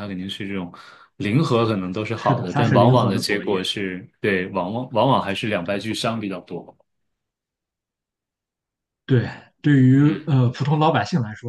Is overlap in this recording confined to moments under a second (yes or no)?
no